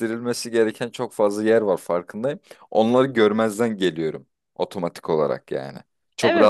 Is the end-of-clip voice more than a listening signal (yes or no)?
yes